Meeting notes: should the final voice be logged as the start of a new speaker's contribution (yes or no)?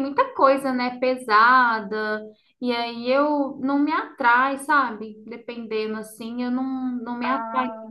no